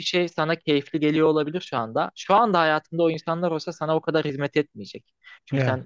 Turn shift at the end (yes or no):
no